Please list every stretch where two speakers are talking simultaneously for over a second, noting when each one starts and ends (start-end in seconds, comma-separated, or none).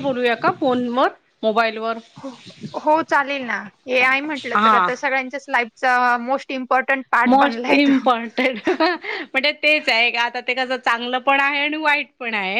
none